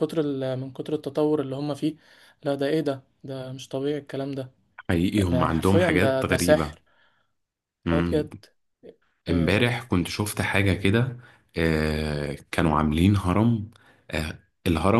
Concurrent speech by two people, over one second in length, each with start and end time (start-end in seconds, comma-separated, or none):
5.3-6.8